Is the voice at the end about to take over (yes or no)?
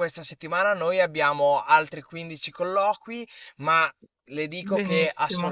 no